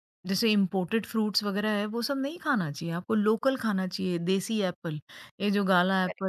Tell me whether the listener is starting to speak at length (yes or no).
no